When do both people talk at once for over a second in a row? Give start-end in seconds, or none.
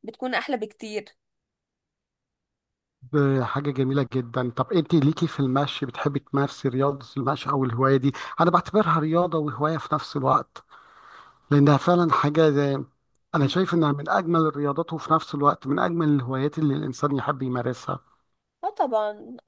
none